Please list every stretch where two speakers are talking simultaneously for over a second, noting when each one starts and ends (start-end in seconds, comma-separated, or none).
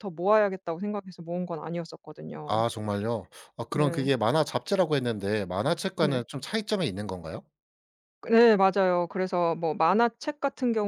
none